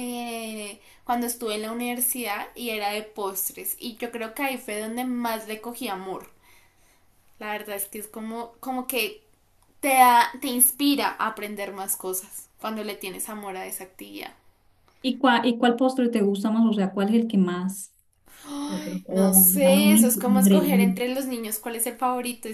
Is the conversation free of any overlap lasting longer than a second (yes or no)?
no